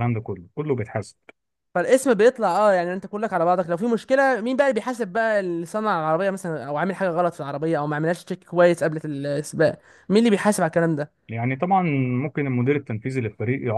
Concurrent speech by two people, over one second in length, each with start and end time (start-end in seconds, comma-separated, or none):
none